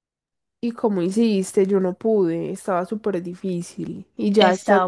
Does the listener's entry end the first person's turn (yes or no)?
yes